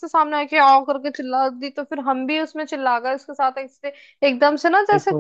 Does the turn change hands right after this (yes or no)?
no